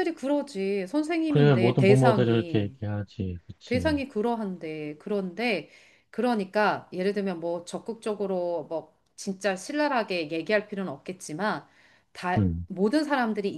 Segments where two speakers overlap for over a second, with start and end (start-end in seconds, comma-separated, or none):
1.3-2.8